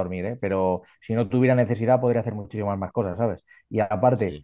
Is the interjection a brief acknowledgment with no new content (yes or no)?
yes